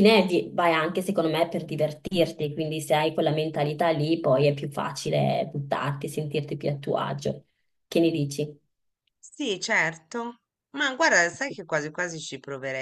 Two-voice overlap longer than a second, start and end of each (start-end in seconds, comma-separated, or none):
none